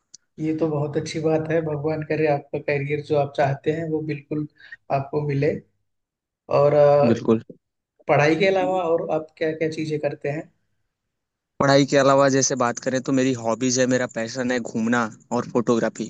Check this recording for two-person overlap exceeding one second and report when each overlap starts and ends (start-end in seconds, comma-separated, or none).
none